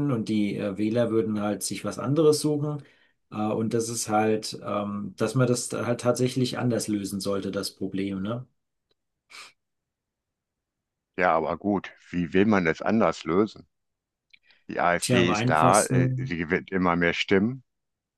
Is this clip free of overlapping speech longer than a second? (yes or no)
no